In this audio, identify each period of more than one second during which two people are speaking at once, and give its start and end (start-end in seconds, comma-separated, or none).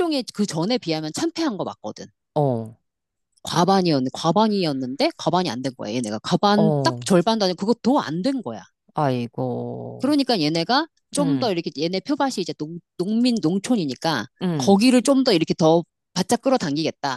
none